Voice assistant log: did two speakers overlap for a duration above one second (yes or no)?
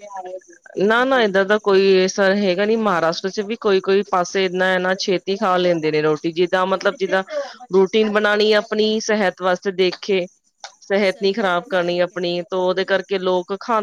yes